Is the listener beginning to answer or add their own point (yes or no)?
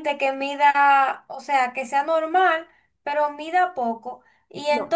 no